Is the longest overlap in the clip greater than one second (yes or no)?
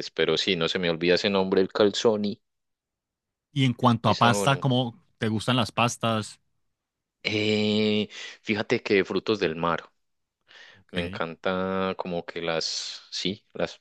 no